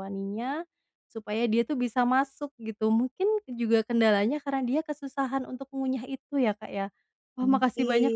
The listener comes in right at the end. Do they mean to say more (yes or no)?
no